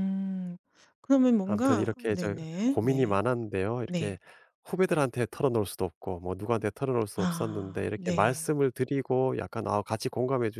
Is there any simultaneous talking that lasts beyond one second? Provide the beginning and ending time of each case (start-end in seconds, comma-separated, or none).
1.4-3.2, 7.2-8.5